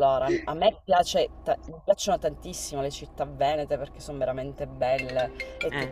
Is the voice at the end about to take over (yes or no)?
no